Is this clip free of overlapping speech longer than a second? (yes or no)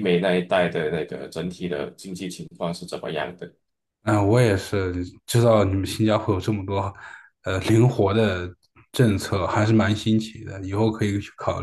yes